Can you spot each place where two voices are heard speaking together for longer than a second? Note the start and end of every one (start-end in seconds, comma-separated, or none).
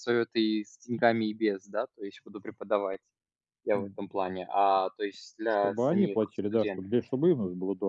5.5-6.9